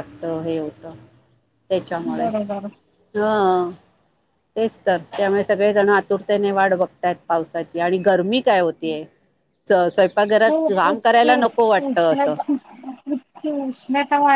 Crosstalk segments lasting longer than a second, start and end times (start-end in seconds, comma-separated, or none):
10.5-12.3